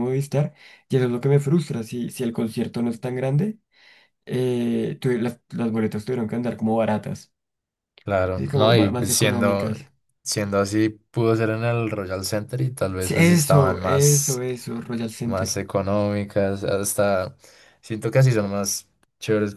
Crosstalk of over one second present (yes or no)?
yes